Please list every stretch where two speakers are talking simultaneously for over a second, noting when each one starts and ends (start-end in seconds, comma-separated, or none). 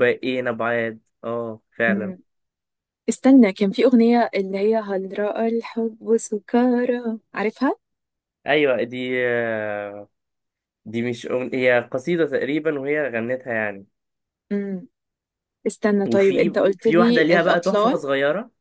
16.1-18.0